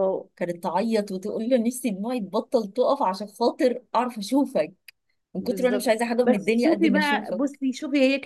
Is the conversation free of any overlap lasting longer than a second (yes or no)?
no